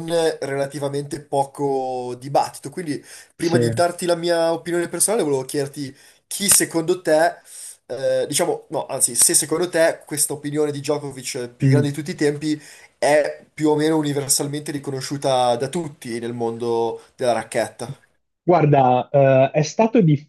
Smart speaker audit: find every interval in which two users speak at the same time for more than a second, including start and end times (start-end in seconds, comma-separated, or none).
none